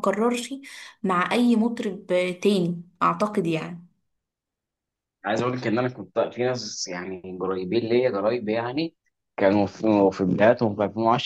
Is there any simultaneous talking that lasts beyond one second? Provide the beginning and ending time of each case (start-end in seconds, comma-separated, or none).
none